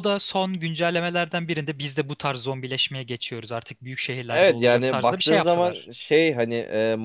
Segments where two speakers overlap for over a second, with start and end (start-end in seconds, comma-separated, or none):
4.3-5.9